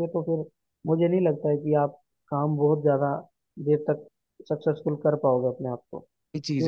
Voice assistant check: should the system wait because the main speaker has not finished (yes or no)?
no